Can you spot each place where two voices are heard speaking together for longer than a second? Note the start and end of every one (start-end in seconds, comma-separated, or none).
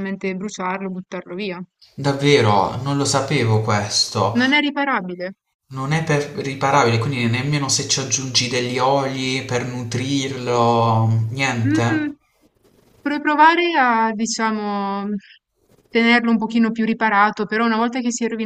none